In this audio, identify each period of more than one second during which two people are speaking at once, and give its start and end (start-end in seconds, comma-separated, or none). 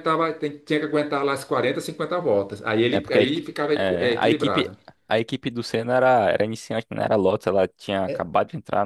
2.9-4.7